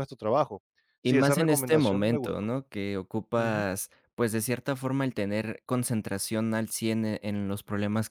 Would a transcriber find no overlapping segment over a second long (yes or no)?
no